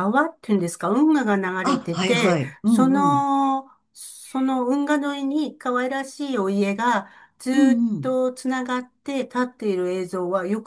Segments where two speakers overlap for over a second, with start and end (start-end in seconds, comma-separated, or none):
1.6-3.2